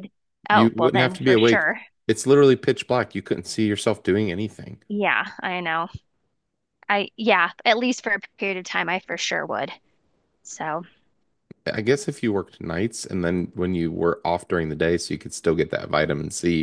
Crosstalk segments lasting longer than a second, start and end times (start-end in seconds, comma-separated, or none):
0.5-1.8